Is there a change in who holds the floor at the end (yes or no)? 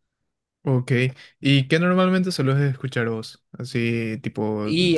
no